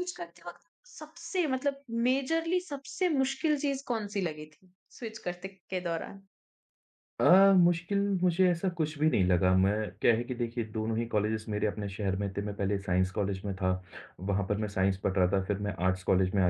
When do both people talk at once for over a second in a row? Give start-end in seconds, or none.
none